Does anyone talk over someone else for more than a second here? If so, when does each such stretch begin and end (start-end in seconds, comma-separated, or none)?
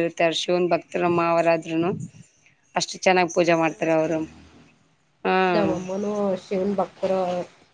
none